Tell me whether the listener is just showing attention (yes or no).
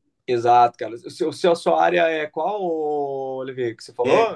no